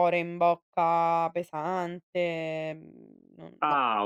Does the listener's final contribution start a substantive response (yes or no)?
yes